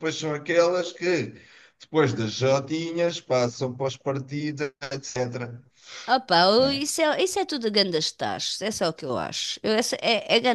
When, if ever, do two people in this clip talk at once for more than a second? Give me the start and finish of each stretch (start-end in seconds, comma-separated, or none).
none